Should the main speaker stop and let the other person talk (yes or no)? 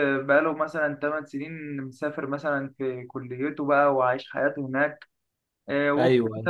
no